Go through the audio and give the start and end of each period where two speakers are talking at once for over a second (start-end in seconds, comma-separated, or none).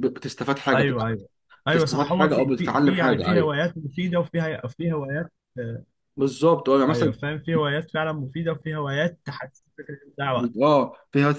1.7-3.5